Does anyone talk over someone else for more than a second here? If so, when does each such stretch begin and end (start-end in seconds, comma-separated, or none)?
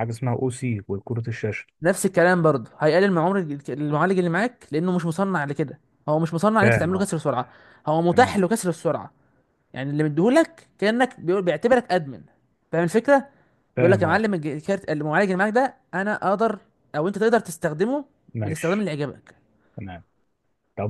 none